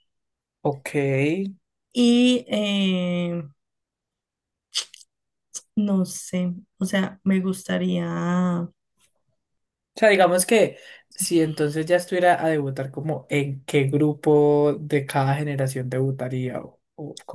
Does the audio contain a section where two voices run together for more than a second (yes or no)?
no